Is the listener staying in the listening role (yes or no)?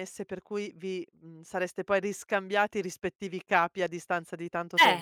no